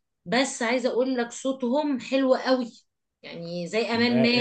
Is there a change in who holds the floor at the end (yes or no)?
yes